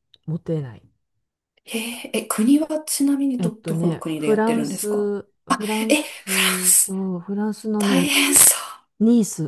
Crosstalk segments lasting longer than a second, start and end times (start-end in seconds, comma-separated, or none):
3.4-5.1